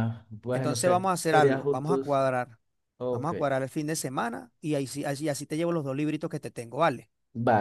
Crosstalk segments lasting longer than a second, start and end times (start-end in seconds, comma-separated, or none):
0.5-2.0